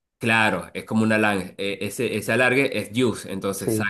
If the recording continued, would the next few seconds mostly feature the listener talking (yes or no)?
no